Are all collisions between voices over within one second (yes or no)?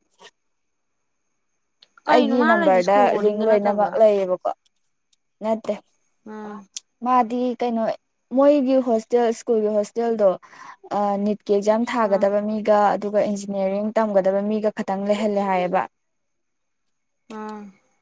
no